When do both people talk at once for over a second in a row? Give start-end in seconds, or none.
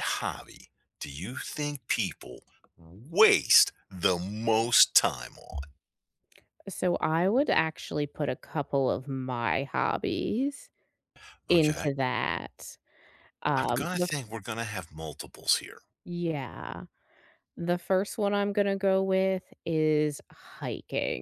none